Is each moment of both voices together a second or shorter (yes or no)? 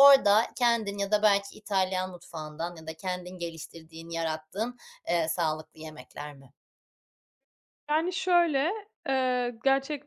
yes